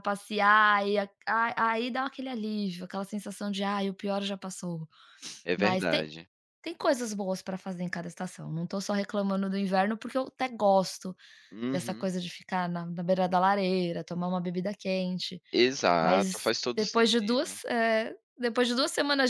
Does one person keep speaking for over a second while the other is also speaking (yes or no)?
yes